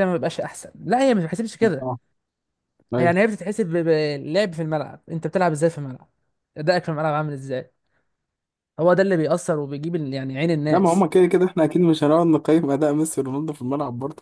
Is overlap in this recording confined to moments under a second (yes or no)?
yes